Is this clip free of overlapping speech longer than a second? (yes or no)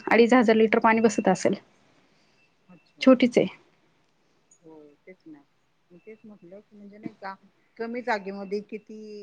yes